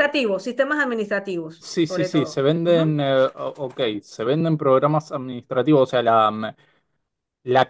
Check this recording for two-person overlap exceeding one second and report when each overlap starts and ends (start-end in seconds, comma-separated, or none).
1.6-3.0